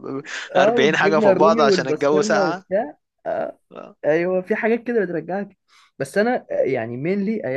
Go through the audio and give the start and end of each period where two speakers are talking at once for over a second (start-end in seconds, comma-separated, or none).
0.6-2.6